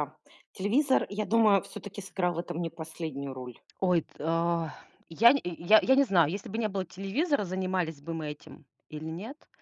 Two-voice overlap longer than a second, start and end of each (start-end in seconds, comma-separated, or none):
none